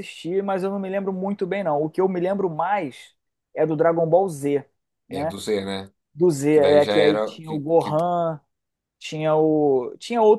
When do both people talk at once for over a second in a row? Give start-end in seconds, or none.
6.5-8.0